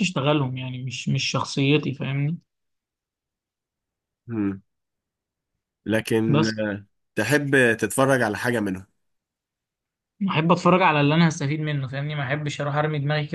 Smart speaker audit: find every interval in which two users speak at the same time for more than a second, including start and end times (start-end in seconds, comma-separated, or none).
none